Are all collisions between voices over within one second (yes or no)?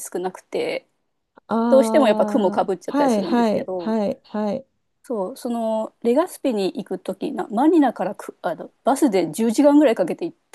no